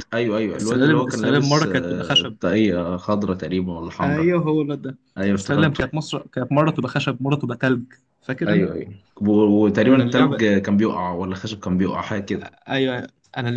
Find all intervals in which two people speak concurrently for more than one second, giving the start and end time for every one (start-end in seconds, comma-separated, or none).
0.6-2.4